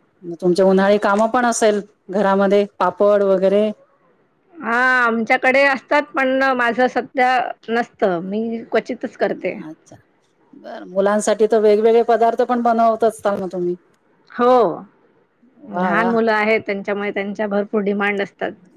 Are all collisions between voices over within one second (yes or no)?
yes